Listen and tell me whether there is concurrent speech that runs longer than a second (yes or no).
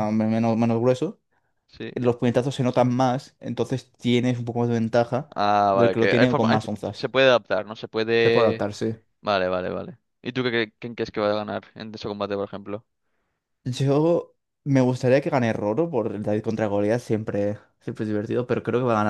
yes